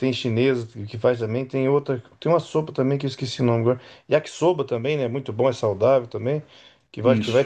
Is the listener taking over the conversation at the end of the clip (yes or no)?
no